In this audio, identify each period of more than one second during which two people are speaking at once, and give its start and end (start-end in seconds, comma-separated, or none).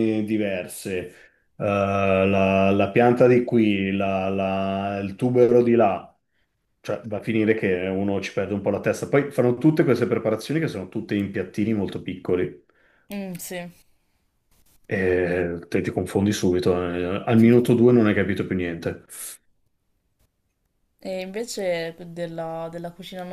none